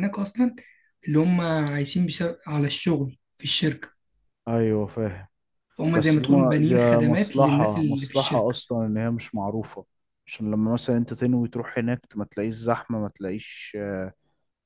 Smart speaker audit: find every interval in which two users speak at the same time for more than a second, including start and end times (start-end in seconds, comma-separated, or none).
5.9-8.6